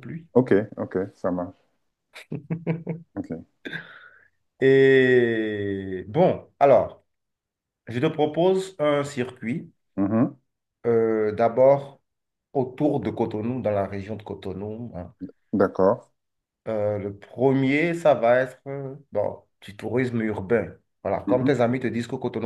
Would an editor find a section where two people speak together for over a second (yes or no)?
no